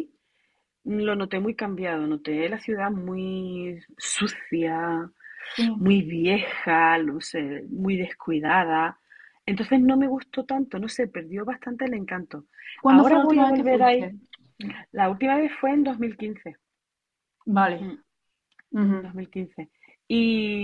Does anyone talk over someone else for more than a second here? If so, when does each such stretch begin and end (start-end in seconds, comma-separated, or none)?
12.9-14.1